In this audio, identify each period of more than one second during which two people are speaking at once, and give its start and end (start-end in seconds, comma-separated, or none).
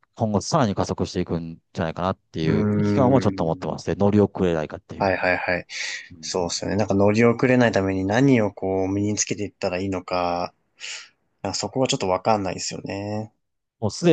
2.5-3.7